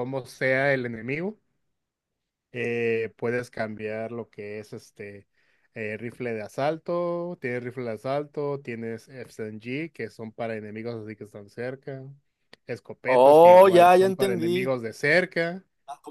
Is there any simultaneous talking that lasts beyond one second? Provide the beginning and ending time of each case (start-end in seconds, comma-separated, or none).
13.2-14.7